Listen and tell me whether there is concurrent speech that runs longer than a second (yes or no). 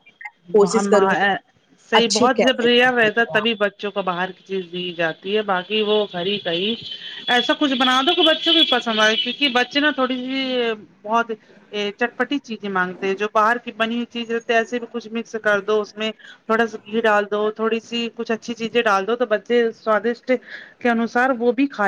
yes